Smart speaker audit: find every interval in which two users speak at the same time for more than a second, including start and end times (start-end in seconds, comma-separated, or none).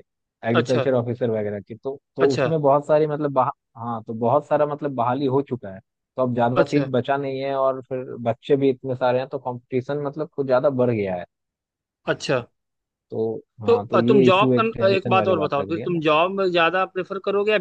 13.7-16.0